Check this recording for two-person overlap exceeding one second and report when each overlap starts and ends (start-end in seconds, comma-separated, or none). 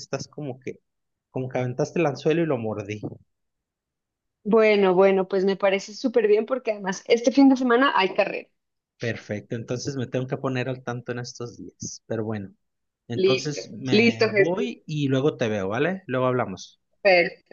13.1-14.7